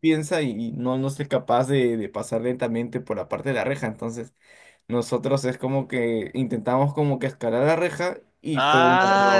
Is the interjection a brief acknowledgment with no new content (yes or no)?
no